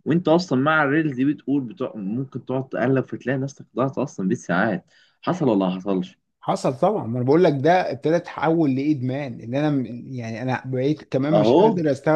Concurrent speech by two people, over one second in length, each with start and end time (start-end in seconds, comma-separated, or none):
none